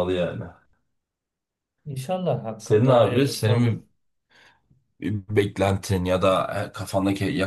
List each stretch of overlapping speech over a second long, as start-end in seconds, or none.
2.6-3.8